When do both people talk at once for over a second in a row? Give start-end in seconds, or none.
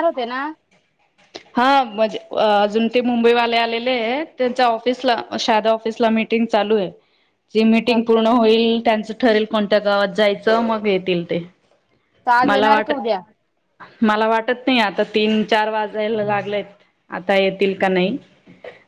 none